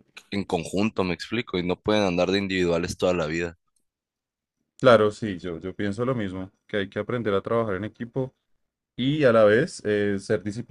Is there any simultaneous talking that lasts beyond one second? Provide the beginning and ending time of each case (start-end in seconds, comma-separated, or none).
none